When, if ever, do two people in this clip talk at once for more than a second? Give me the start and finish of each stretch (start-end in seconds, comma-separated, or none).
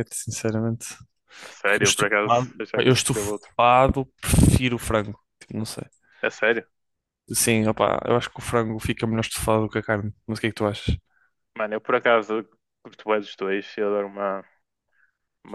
1.6-3.5